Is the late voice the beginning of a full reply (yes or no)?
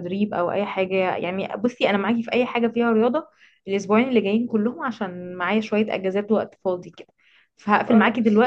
no